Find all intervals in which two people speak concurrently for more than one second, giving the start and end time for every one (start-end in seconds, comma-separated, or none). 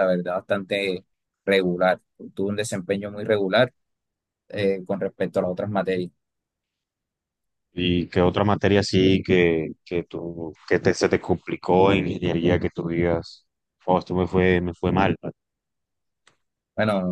none